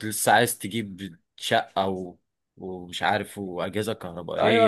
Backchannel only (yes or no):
no